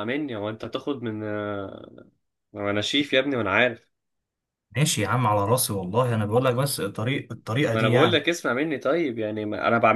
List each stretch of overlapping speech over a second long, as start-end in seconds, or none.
none